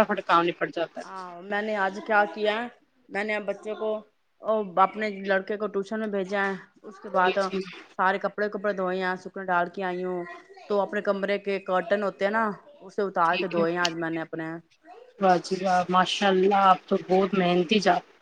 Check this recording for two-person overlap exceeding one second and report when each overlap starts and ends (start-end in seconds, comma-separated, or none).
none